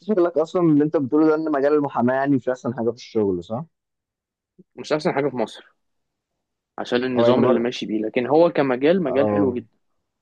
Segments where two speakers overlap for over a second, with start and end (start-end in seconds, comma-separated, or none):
none